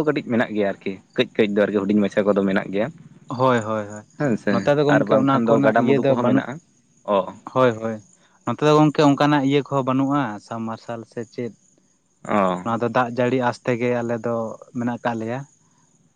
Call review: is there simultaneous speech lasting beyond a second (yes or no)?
yes